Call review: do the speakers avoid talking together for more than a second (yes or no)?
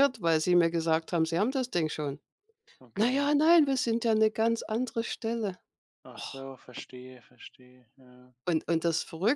yes